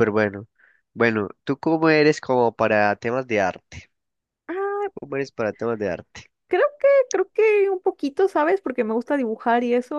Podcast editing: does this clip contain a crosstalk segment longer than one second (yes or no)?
no